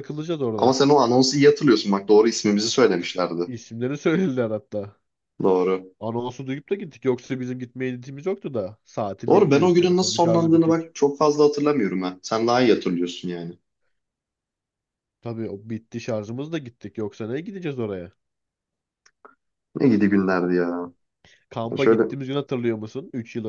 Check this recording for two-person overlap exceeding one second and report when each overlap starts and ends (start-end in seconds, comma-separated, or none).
9.3-10.9